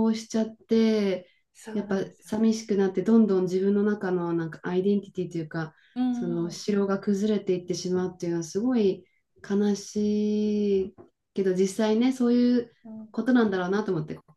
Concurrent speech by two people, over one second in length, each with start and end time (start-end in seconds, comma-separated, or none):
none